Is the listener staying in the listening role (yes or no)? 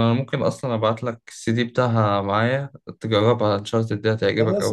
no